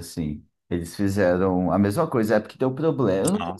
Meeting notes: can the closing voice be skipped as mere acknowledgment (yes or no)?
yes